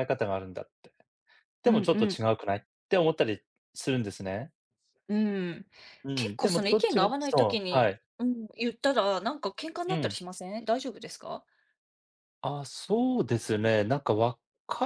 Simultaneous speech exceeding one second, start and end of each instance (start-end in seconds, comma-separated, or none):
6.2-8.0